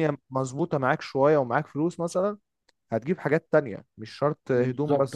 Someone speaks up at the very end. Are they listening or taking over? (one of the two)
taking over